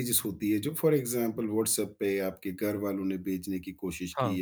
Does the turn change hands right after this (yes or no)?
no